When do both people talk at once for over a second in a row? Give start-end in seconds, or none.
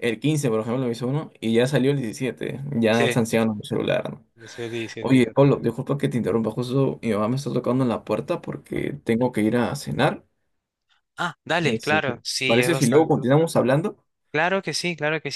11.6-13.1